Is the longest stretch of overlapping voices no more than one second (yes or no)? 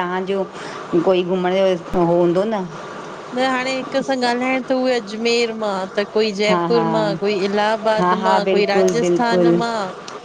no